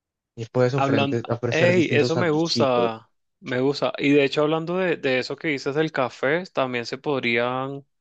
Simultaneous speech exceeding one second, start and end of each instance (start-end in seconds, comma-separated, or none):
0.8-2.9